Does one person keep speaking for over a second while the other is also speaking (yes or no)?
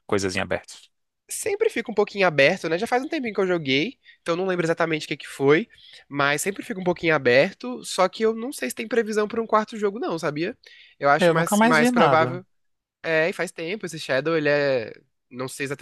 yes